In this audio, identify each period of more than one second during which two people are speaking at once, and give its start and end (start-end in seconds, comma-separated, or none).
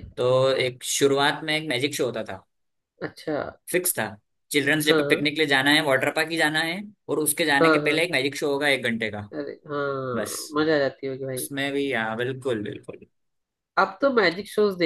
none